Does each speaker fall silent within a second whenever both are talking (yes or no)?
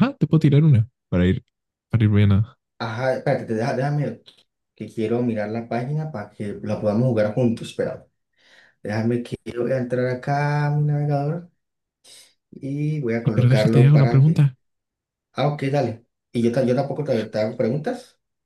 no